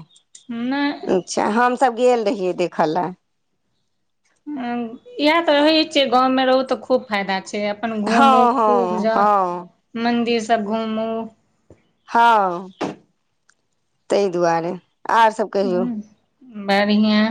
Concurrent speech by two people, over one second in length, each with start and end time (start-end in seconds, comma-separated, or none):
8.2-9.7